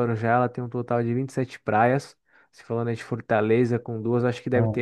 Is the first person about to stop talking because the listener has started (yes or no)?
no